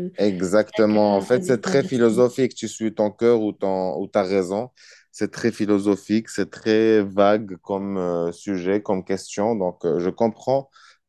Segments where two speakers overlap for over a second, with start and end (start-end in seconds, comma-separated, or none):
0.7-2.2